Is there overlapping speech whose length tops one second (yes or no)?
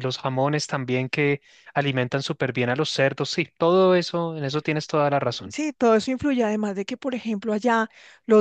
no